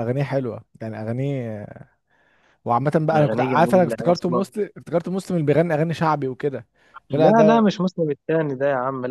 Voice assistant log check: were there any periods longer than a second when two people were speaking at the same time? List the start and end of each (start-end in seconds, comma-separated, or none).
3.1-4.4